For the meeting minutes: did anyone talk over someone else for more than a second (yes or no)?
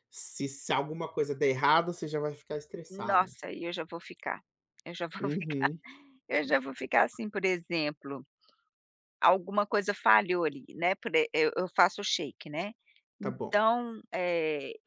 no